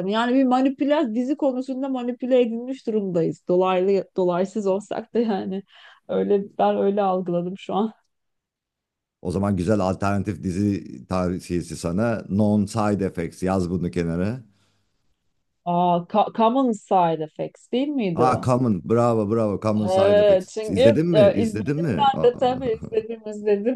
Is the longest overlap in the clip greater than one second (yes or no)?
yes